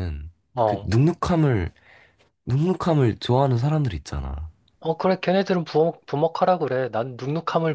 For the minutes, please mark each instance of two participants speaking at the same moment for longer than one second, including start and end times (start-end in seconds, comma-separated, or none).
none